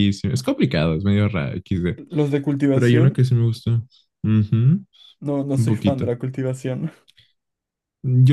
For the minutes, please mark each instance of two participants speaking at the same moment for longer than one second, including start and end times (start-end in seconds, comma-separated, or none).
none